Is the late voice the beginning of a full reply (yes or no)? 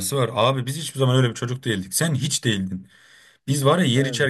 no